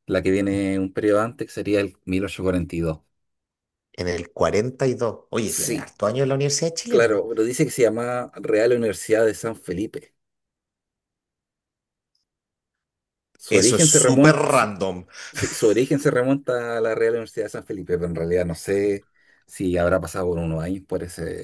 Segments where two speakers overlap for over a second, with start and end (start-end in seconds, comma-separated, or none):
13.5-14.7